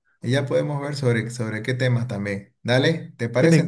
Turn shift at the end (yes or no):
no